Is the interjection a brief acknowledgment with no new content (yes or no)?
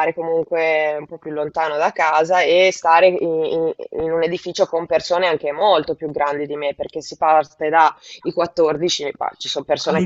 no